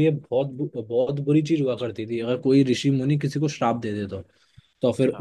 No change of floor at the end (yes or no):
yes